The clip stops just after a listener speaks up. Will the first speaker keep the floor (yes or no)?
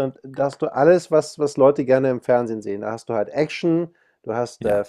yes